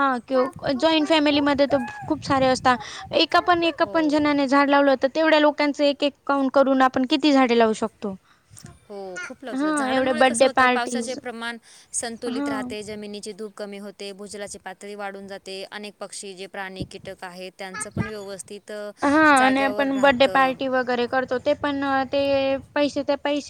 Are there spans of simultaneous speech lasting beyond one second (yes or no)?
yes